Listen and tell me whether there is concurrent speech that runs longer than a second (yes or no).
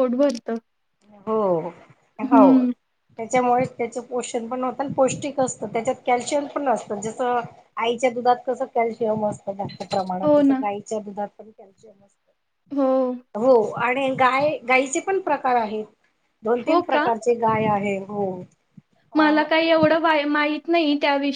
no